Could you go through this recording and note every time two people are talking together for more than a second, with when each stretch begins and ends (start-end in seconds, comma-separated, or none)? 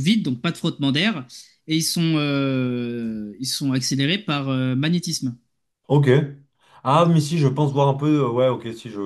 none